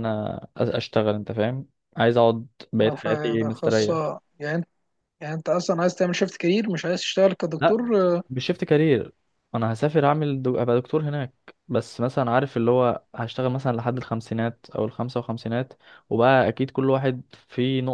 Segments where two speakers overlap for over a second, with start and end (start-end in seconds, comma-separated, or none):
2.8-4.0